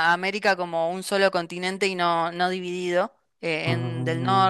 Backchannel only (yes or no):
yes